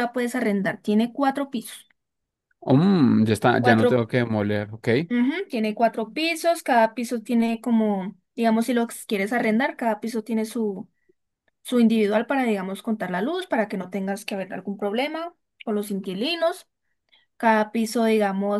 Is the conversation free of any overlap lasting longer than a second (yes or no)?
yes